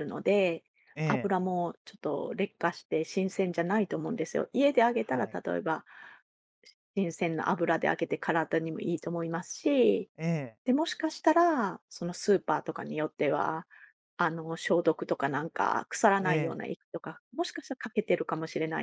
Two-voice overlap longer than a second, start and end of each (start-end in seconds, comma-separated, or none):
none